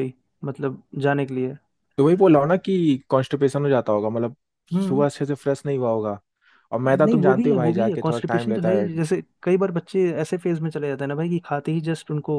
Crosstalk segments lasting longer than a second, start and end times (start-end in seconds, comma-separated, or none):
6.9-8.9